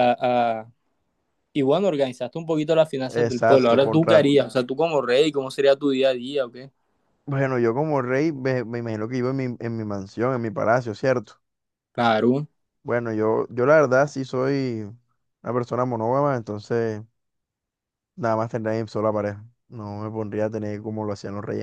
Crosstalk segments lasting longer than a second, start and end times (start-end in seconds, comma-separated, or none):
3.0-4.3